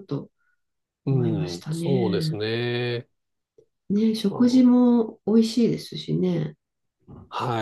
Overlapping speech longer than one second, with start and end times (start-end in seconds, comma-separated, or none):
1.1-2.4